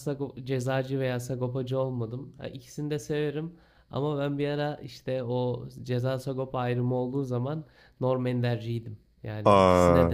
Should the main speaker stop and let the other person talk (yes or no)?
no